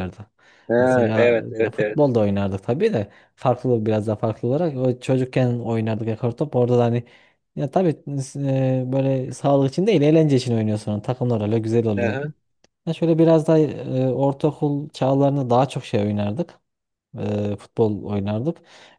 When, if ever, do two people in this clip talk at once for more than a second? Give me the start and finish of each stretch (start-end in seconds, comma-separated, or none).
0.8-2.1